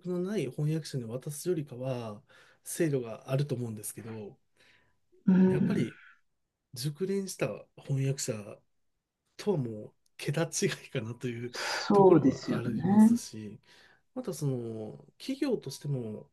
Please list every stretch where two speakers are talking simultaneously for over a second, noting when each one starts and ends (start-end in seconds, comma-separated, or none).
11.9-13.2